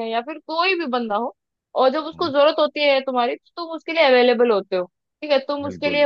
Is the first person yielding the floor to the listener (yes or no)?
no